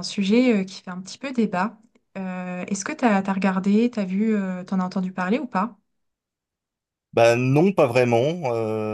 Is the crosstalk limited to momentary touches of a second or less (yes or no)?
yes